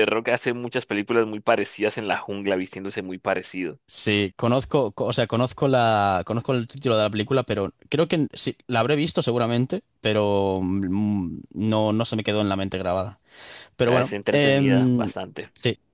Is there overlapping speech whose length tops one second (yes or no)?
yes